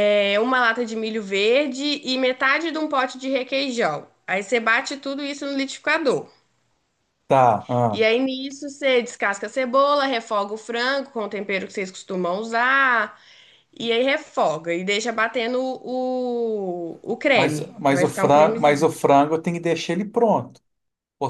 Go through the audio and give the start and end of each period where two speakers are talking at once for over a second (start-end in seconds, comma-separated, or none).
17.3-18.9